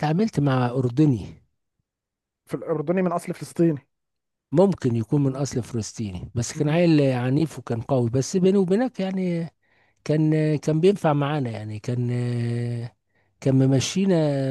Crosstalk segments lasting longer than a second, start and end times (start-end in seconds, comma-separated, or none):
none